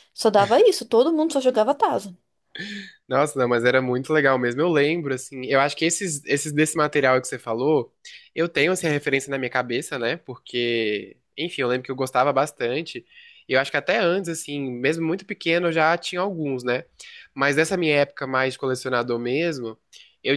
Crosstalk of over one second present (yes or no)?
no